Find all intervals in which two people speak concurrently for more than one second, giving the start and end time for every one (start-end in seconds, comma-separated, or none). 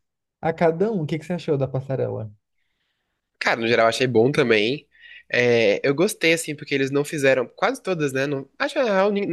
none